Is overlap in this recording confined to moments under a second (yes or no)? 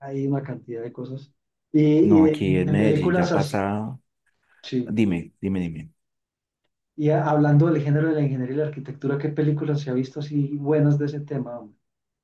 no